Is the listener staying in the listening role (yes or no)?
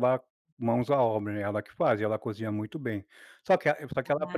yes